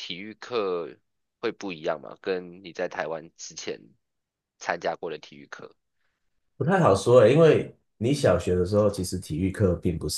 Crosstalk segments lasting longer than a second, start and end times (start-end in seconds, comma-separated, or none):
none